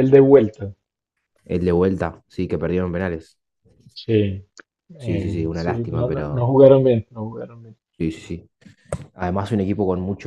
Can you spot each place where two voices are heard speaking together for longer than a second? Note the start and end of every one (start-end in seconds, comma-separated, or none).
5.0-6.5